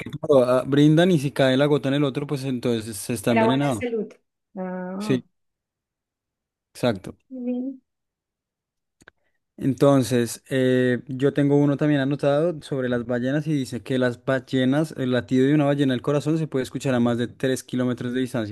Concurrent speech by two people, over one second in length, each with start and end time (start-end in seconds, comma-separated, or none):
none